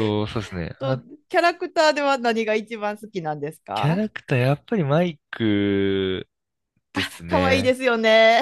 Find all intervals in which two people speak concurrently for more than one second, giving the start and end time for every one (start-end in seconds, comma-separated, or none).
none